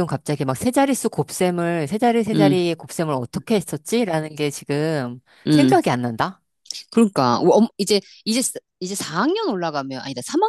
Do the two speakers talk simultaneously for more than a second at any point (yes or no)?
no